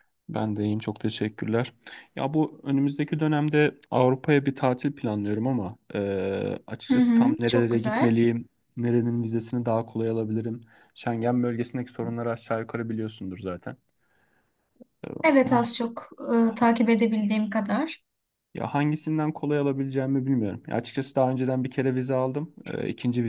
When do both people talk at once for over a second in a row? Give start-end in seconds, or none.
6.9-8.2